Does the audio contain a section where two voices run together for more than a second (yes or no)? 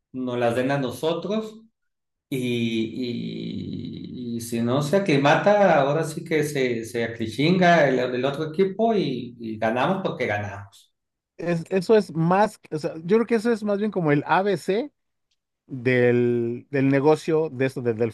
no